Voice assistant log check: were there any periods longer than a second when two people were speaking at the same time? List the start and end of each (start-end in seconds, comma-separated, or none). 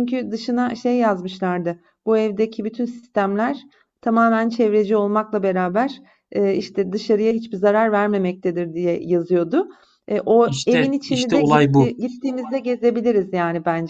10.4-11.9